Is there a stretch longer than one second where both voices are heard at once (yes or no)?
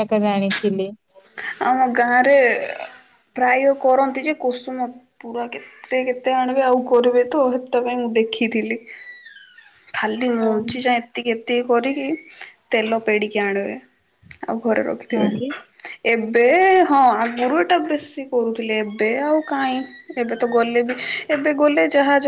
no